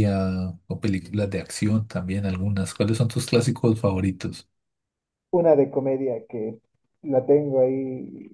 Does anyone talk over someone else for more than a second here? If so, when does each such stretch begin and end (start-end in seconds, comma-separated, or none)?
none